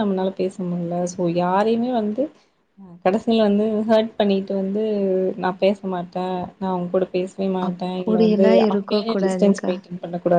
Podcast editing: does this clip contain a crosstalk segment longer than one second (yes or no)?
yes